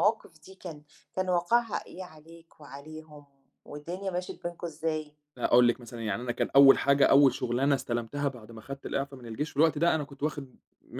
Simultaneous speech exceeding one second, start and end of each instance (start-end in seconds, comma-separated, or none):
none